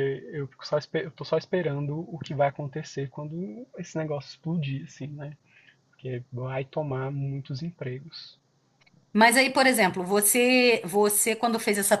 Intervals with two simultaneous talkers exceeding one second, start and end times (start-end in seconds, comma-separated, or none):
none